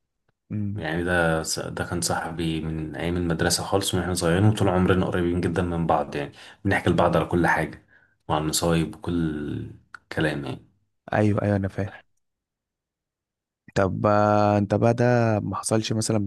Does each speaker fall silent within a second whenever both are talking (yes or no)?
yes